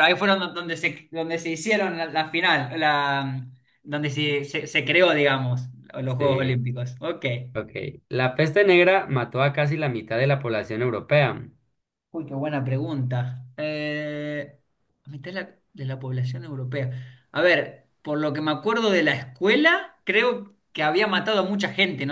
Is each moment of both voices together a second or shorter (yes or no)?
yes